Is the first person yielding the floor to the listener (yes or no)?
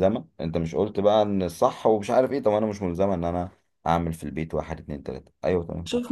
yes